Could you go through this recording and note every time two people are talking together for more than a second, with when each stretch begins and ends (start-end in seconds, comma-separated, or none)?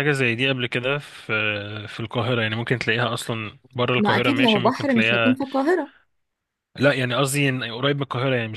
4.0-5.4